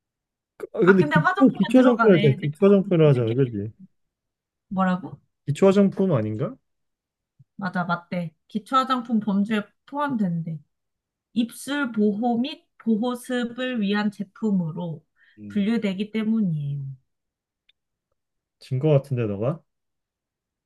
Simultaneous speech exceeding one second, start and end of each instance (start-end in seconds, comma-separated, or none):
0.8-3.2